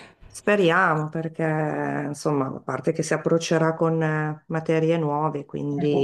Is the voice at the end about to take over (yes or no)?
no